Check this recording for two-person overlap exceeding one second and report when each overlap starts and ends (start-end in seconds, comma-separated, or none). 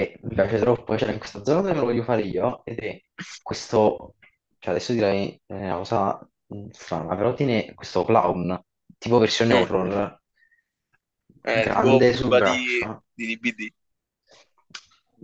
11.6-13.0